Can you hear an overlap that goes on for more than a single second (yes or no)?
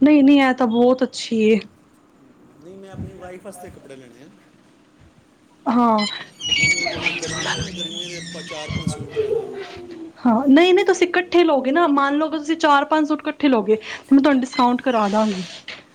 no